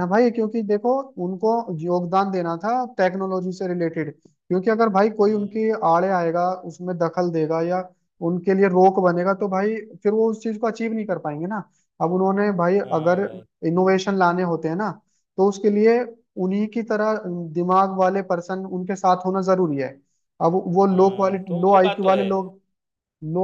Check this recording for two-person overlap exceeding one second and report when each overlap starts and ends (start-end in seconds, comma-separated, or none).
20.9-22.2